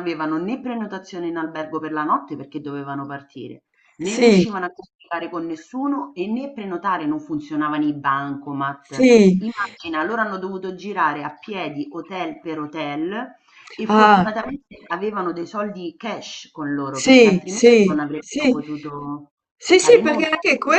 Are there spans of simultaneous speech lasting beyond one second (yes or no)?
yes